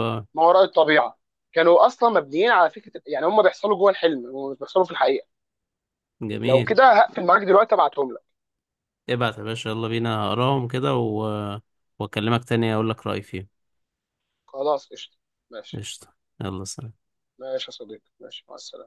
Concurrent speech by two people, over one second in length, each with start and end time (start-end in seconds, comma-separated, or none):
none